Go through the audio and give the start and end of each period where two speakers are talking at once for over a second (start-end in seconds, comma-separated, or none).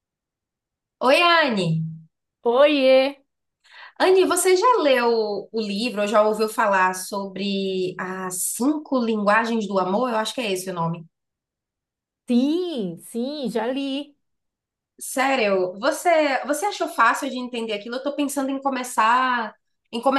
none